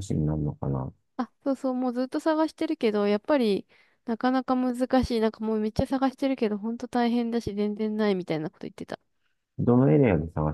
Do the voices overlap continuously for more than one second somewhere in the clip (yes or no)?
no